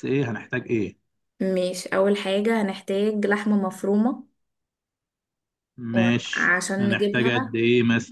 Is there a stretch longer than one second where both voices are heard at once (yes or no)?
yes